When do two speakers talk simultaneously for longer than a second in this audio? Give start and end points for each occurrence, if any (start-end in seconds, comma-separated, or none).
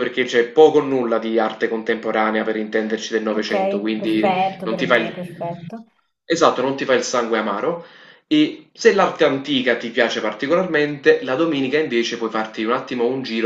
3.4-5.3